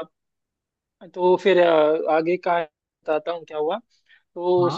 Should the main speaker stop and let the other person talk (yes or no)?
no